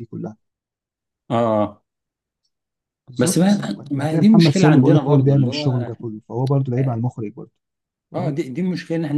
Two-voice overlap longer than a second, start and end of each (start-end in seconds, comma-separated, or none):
3.2-6.0